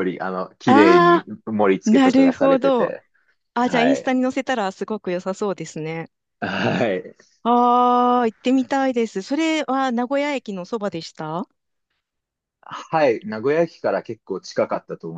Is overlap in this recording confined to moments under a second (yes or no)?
no